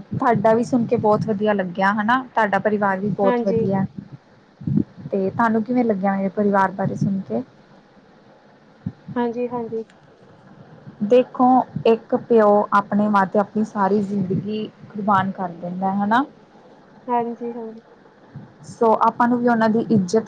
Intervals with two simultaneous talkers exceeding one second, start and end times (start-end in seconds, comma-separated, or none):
none